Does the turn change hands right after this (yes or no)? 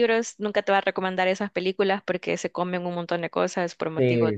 yes